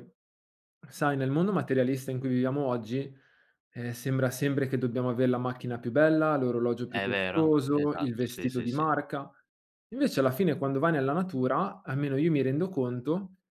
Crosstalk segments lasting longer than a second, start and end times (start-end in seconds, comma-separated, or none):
6.8-8.8